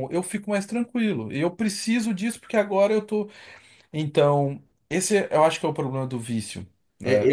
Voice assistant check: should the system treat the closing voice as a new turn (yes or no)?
yes